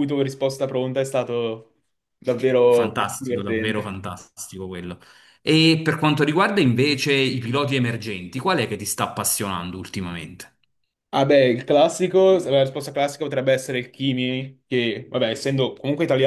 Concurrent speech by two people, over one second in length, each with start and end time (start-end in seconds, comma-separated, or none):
2.7-3.9